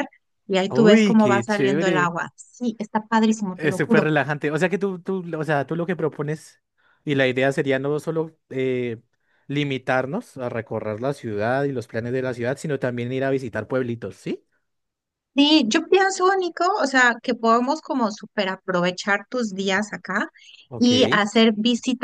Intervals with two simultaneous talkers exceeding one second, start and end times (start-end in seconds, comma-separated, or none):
0.7-2.1